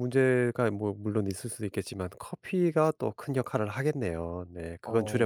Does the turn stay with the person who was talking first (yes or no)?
no